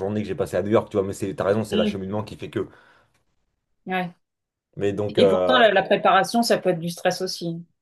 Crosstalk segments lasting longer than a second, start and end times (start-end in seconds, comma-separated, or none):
none